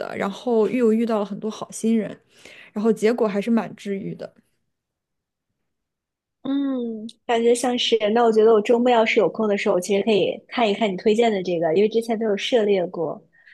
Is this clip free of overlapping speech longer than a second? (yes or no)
yes